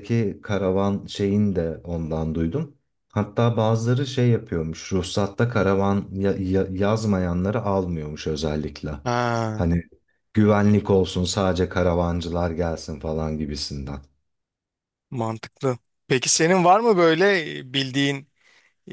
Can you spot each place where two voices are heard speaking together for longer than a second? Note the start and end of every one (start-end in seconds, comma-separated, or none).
none